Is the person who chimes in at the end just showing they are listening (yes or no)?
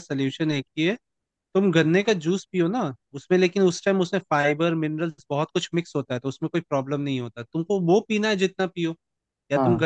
yes